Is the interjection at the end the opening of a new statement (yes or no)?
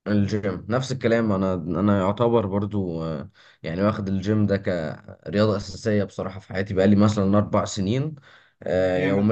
no